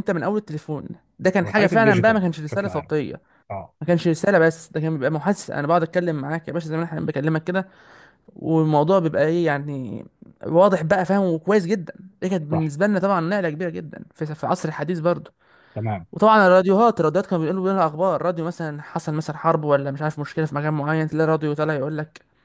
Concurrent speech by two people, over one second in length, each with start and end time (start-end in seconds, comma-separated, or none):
1.4-2.9